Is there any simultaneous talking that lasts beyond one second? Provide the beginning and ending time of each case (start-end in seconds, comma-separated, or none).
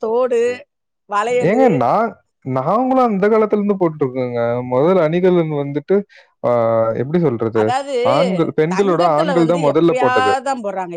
8.7-10.3